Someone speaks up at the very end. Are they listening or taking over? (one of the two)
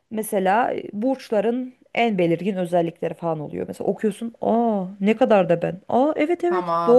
taking over